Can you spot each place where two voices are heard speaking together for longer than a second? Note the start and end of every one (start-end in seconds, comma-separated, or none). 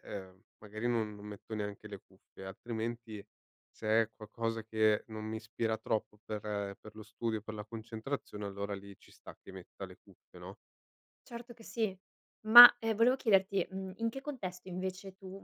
none